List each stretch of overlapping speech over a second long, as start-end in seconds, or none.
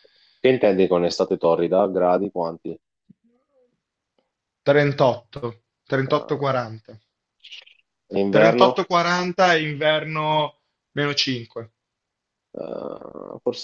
none